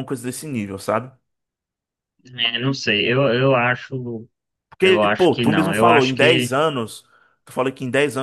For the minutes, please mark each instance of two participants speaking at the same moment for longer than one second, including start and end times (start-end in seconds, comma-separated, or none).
4.8-6.6